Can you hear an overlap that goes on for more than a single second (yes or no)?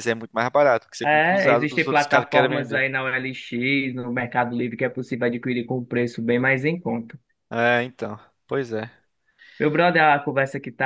yes